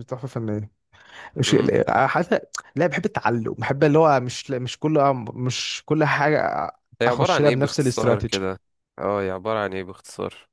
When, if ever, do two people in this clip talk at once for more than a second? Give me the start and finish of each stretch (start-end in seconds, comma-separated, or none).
7.1-8.4